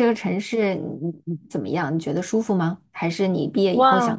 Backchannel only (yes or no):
no